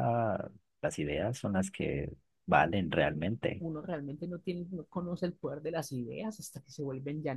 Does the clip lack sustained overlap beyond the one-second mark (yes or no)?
yes